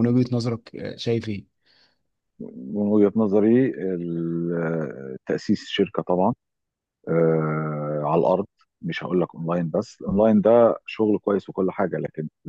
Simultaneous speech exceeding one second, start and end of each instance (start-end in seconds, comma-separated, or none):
none